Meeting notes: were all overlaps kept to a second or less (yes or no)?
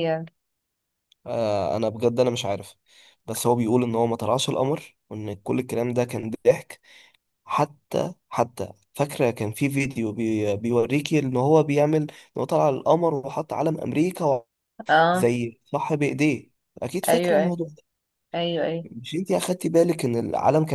yes